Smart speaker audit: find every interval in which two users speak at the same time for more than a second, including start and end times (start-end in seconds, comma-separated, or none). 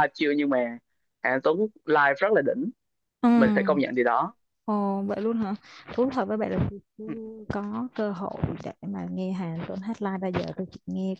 none